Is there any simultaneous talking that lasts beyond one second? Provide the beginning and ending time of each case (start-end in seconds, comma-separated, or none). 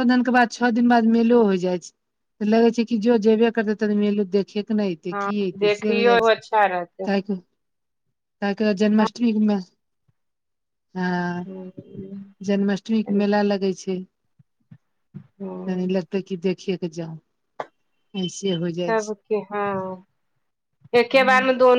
5.1-7.1